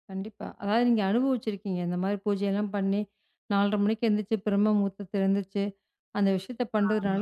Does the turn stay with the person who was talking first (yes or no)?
yes